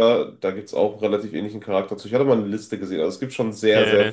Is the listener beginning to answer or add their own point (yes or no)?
yes